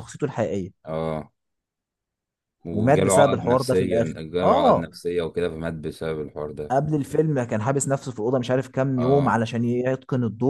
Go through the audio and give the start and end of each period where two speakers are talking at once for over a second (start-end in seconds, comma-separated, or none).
2.7-4.9